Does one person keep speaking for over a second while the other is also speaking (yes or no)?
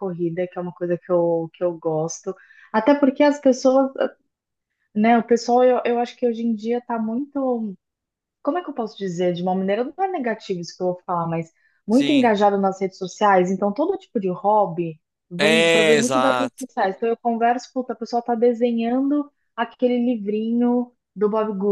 yes